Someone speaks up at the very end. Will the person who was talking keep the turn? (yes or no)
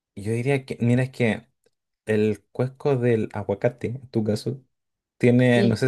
yes